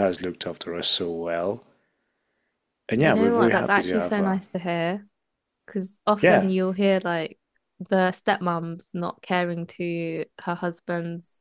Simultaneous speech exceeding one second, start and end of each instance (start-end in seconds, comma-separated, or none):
3.0-4.4